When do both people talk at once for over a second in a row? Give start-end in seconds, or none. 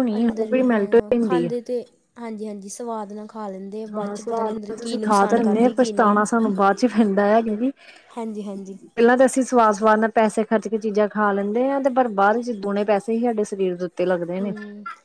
3.9-5.9